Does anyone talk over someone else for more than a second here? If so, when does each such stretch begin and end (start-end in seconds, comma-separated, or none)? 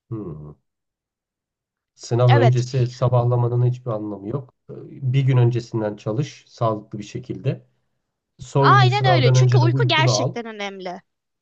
8.6-10.3